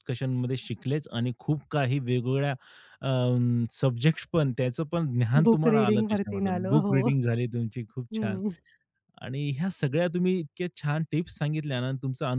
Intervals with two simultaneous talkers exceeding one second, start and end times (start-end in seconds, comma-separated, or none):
5.5-6.9